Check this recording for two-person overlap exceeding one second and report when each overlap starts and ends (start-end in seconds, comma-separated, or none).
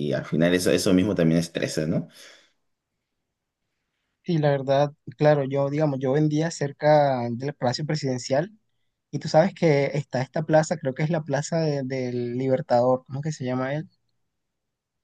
none